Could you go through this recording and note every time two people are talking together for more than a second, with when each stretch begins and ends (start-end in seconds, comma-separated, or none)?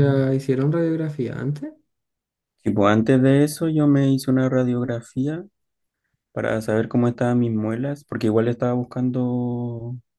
none